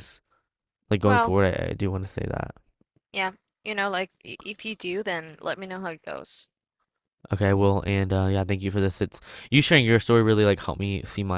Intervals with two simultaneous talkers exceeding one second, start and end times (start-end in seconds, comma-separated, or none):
none